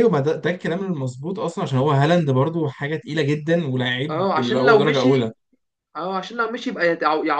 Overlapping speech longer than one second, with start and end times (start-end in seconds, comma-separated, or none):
4.1-5.3